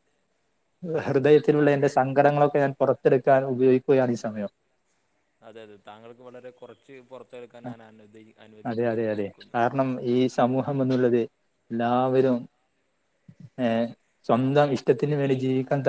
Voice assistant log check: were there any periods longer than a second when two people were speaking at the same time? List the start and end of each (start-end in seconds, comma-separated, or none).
none